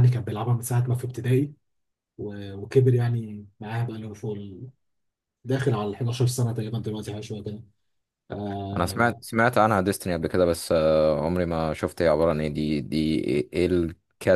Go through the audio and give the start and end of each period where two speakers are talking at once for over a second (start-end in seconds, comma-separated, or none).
none